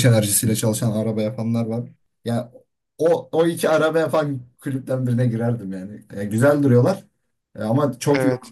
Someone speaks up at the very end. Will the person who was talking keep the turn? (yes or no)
yes